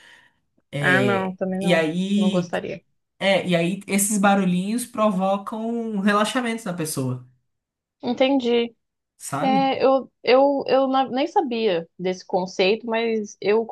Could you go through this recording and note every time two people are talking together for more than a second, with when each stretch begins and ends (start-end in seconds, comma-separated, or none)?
0.8-2.5